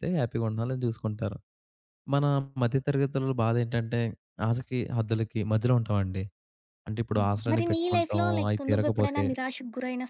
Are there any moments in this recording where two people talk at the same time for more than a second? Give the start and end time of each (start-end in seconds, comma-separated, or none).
7.2-9.2